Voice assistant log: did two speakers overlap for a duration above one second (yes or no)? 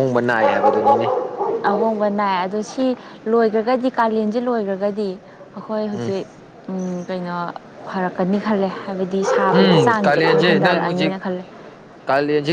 yes